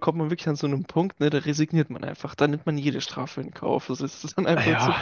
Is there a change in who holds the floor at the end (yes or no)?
yes